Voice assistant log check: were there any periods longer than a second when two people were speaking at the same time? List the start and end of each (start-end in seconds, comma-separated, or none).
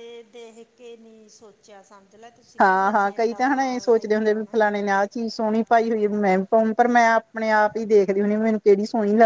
2.6-4.6